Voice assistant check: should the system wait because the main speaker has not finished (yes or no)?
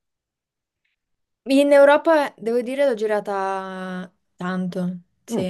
yes